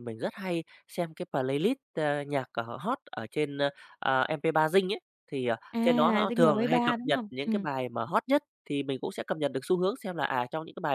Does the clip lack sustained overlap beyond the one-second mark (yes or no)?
no